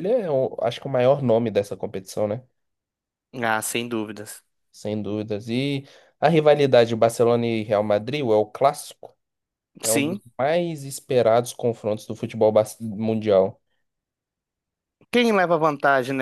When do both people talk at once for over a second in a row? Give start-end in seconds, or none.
none